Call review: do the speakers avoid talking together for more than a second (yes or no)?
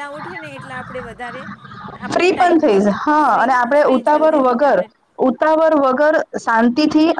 no